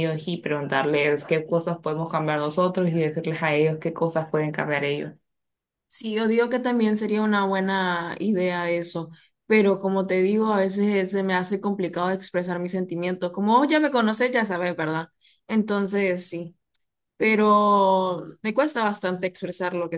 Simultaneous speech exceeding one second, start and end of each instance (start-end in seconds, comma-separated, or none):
none